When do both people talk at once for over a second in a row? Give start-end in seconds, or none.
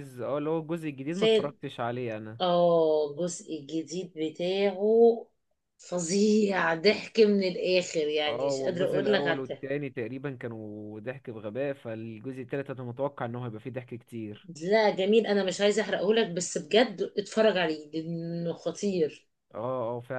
8.3-9.7